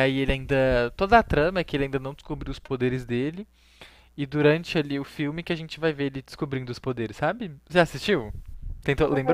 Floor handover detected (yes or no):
yes